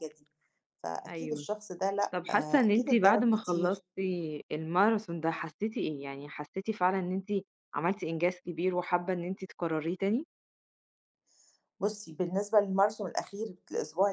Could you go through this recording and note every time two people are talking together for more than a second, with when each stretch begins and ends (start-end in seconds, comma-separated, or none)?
2.1-3.8